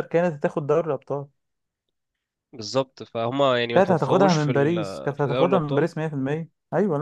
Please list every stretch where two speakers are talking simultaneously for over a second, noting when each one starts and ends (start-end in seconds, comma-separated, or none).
3.7-5.9